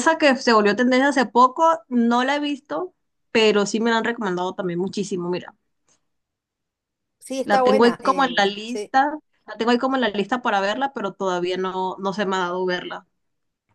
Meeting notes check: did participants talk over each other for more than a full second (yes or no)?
yes